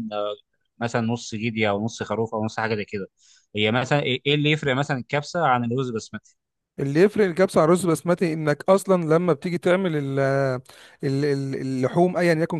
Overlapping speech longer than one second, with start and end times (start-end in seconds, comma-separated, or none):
none